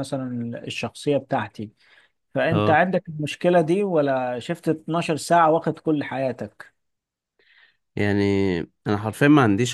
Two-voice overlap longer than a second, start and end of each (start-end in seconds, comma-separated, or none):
none